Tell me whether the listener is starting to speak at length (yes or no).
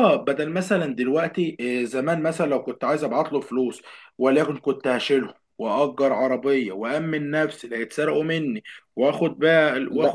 yes